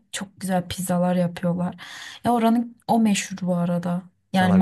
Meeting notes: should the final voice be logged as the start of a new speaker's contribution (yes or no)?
no